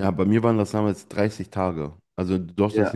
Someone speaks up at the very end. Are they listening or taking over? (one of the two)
listening